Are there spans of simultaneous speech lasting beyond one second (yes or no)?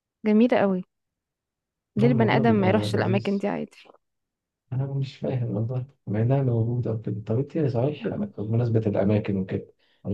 yes